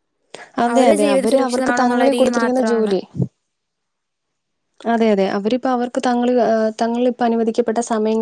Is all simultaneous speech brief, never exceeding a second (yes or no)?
no